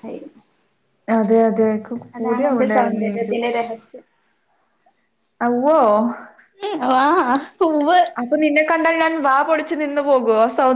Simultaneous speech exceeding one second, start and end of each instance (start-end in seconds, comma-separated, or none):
2.2-3.5